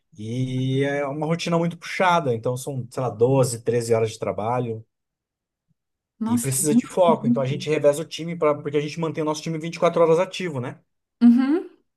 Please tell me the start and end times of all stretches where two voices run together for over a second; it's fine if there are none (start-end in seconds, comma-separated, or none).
6.3-7.7